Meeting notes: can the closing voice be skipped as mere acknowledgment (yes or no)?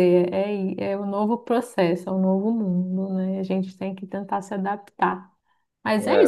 yes